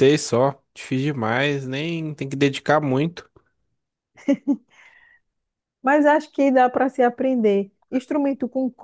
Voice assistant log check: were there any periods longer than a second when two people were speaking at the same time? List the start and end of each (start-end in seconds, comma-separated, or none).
none